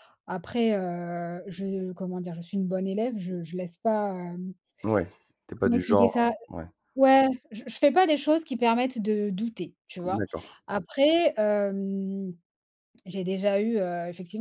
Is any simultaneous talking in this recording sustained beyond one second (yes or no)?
no